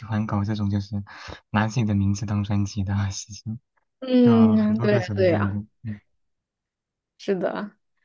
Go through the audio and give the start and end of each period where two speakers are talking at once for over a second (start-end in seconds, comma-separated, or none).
4.2-5.6